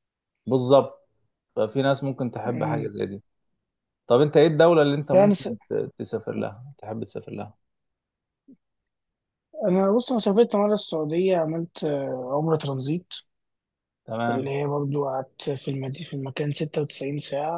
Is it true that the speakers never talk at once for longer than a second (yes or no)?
yes